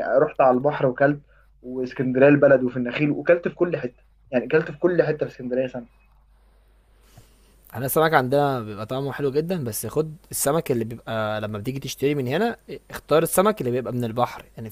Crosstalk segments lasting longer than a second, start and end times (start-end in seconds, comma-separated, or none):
none